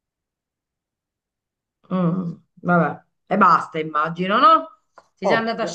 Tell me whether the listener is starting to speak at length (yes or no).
no